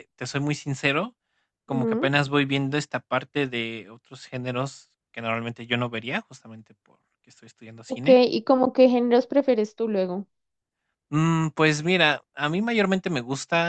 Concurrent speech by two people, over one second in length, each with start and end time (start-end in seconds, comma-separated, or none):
none